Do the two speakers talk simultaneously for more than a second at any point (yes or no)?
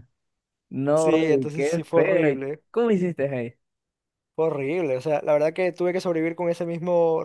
yes